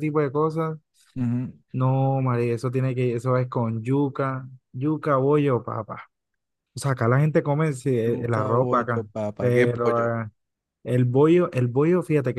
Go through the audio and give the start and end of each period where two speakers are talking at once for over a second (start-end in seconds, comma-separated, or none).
8.1-10.1